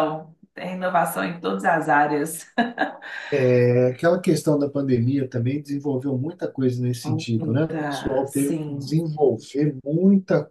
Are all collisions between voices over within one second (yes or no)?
no